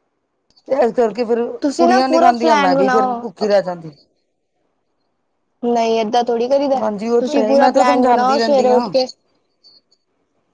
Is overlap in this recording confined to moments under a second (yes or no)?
no